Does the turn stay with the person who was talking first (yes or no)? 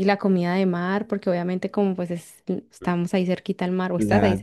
no